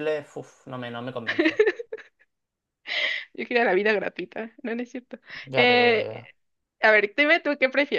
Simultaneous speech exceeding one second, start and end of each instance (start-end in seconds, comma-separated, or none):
none